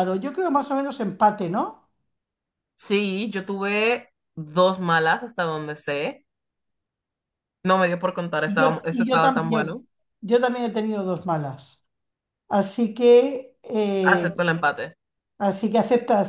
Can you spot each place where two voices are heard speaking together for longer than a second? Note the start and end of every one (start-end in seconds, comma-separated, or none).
8.4-9.8